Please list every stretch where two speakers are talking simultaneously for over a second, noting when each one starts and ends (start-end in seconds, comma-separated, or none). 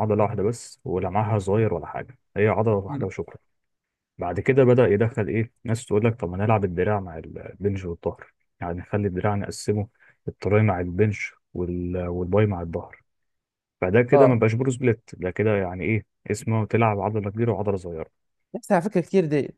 none